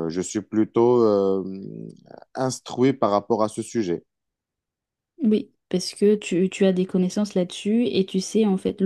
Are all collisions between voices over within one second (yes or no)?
yes